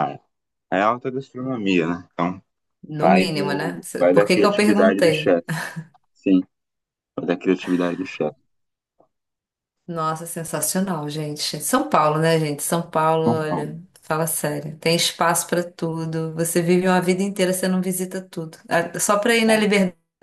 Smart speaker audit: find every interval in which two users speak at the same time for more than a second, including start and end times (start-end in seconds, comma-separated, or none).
3.0-5.4